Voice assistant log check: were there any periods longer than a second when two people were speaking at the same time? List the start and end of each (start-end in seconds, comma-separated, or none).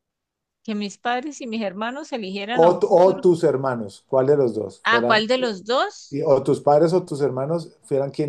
none